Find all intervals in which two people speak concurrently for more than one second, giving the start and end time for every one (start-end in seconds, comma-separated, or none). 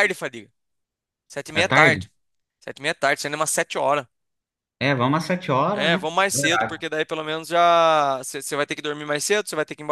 none